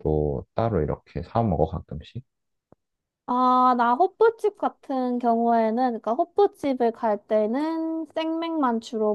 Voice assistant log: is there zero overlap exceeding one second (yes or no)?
yes